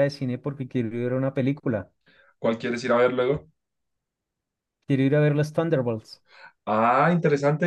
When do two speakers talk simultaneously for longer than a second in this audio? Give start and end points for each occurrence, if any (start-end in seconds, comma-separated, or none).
none